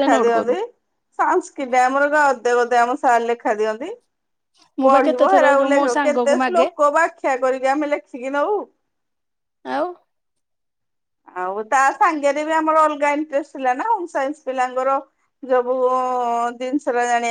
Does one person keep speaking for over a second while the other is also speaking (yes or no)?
yes